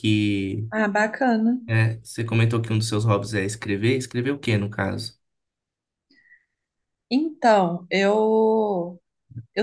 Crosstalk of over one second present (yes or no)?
no